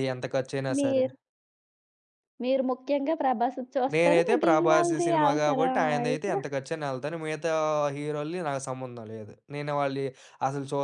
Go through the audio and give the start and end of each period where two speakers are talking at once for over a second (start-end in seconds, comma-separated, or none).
3.9-6.3